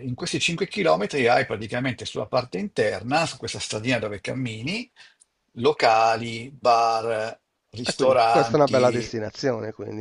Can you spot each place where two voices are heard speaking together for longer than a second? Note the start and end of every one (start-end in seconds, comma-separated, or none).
7.8-9.1